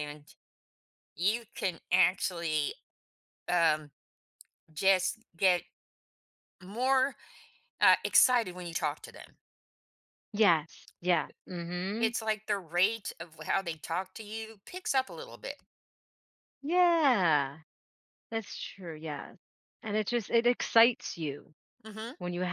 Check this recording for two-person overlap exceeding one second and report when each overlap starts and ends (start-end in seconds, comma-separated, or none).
none